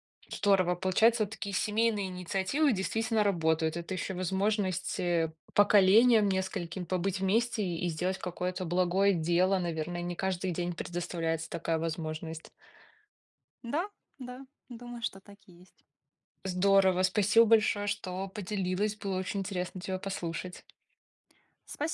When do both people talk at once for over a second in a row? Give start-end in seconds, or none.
none